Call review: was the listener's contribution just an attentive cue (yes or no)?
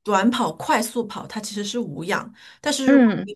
yes